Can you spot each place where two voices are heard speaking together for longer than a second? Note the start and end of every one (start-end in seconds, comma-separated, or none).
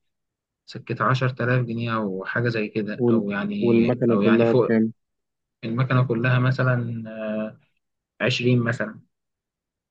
3.0-4.8